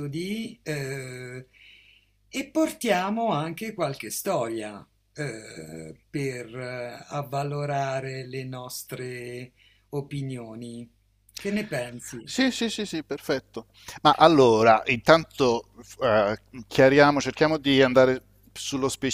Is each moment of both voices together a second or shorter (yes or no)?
yes